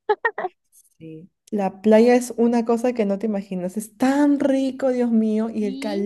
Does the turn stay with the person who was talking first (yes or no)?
yes